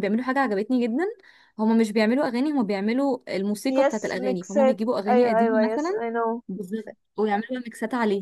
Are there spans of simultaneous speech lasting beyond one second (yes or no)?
yes